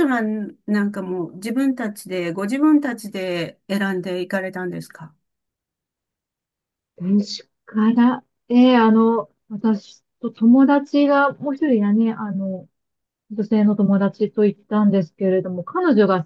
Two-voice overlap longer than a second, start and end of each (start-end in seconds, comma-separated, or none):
none